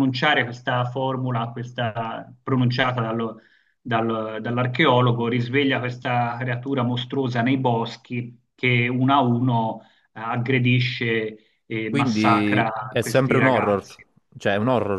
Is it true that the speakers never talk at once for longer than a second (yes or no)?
no